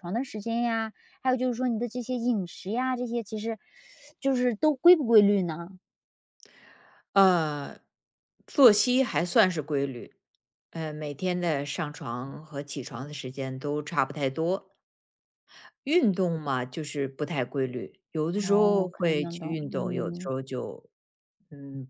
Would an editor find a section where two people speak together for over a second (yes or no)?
yes